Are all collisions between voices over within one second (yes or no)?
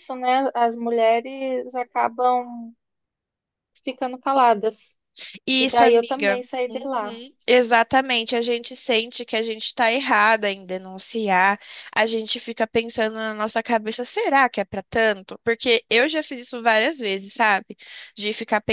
no